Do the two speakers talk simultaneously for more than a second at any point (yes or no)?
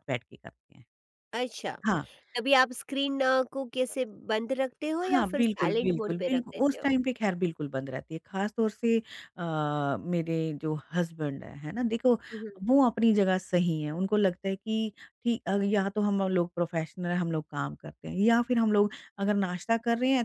yes